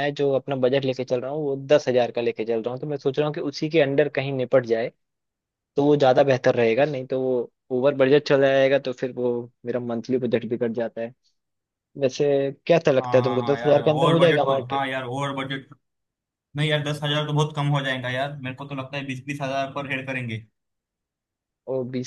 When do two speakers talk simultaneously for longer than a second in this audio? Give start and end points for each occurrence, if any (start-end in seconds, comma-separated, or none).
13.0-14.9